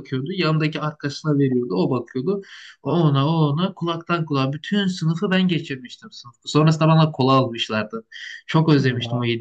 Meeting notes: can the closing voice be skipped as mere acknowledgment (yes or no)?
yes